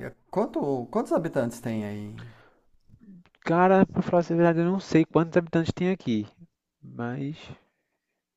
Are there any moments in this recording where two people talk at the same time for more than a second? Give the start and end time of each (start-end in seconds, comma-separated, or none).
none